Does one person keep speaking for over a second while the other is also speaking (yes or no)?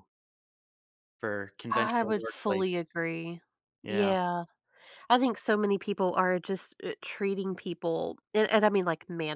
yes